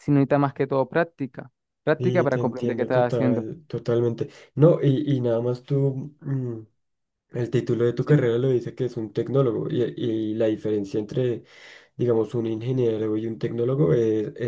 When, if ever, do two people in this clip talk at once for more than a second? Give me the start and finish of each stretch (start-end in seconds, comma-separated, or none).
2.0-3.5